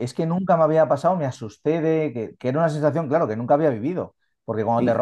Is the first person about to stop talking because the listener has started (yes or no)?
no